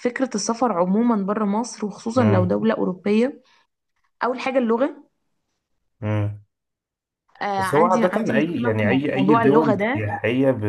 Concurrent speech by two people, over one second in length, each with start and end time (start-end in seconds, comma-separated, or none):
7.6-10.2